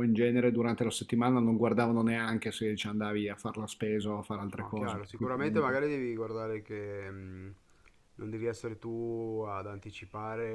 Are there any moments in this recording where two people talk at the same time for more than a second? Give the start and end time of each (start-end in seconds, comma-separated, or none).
4.5-5.8